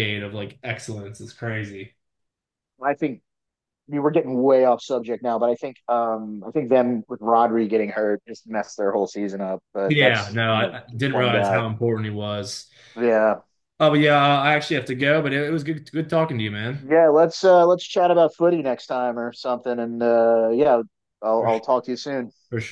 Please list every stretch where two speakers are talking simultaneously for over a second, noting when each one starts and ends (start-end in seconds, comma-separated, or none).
9.8-11.6